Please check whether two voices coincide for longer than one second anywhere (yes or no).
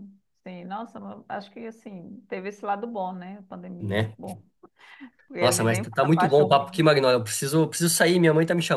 yes